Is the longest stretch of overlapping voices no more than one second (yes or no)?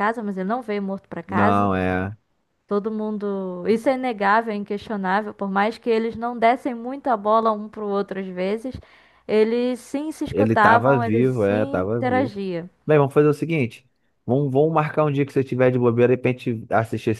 no